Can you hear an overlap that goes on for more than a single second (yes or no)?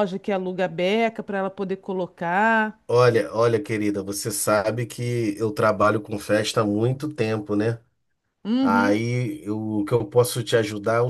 no